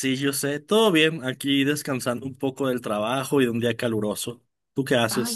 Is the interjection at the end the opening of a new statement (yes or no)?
yes